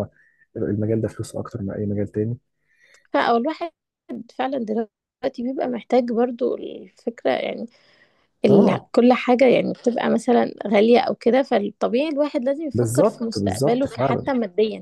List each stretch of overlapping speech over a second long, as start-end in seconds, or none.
12.7-14.2